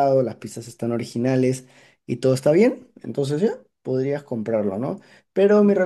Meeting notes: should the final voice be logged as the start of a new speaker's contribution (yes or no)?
no